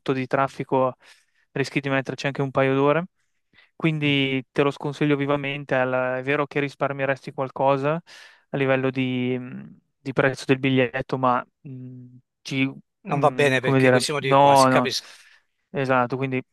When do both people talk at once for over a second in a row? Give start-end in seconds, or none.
13.1-14.9